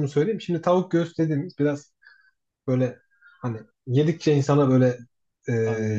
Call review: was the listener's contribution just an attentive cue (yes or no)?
yes